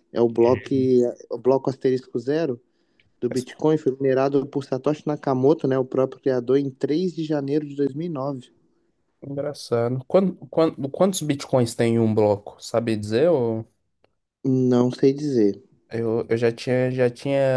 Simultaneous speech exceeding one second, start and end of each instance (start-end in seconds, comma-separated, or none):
none